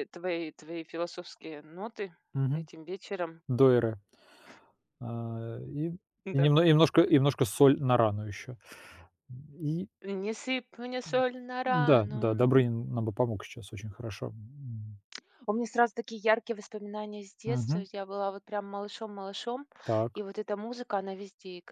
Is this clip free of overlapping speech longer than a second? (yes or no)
yes